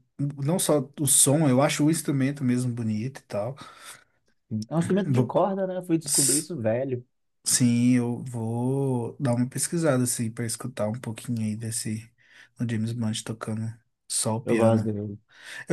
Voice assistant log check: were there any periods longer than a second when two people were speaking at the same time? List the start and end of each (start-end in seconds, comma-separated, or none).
none